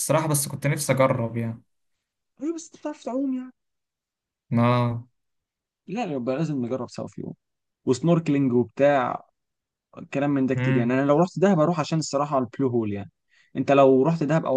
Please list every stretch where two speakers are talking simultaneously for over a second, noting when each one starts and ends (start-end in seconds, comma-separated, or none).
none